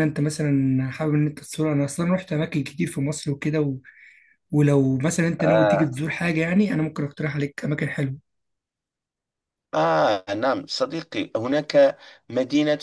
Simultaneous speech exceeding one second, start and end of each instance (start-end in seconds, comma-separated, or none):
none